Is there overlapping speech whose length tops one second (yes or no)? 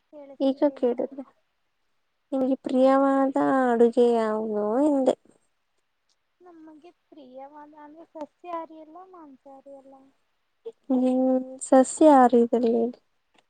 no